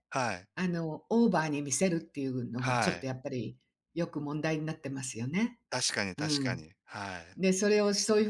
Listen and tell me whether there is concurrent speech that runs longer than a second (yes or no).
no